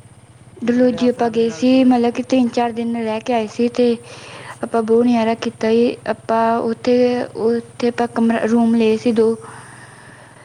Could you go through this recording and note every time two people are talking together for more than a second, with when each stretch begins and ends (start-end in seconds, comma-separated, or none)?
0.6-1.9